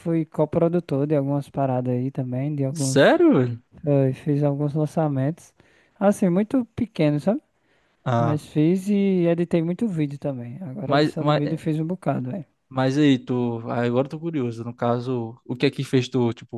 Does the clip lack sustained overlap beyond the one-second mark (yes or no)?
yes